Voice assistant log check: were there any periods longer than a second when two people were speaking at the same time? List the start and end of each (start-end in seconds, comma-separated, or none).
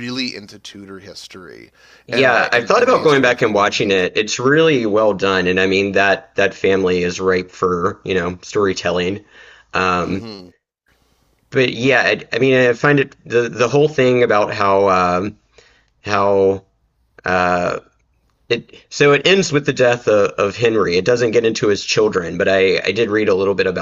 2.1-4.1